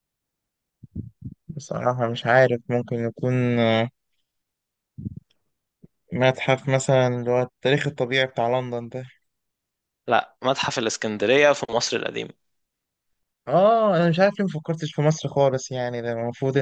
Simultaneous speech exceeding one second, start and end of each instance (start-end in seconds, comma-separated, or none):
none